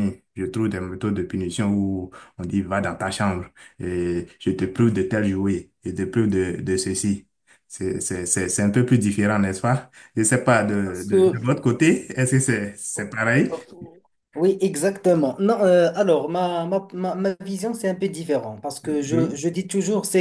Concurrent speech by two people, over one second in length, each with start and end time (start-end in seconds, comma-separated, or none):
none